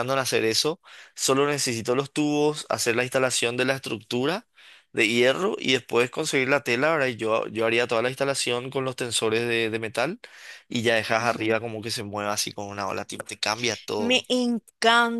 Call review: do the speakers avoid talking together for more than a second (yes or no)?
yes